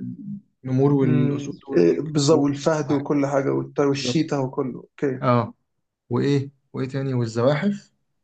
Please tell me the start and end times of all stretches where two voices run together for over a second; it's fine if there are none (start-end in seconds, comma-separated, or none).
1.0-3.1